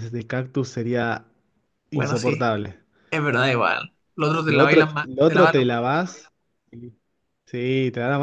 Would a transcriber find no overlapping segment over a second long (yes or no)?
no